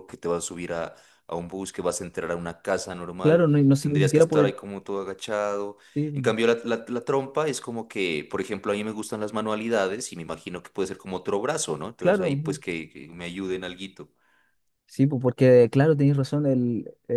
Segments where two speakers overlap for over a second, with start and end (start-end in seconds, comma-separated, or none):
3.2-4.5